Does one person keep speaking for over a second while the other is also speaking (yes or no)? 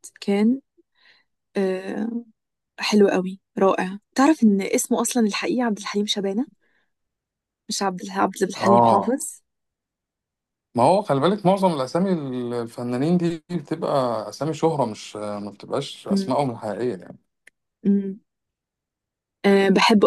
no